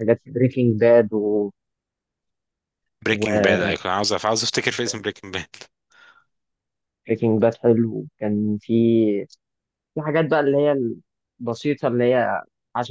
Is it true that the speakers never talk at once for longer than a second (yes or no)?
yes